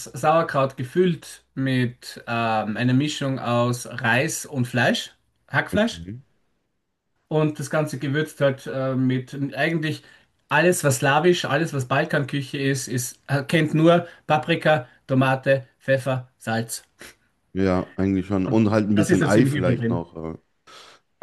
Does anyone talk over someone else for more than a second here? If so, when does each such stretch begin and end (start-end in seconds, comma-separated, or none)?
18.4-20.0